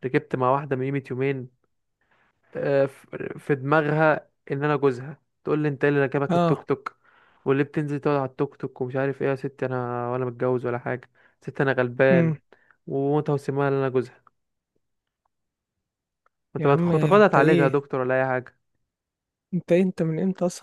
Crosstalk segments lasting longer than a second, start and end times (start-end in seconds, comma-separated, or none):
16.6-17.8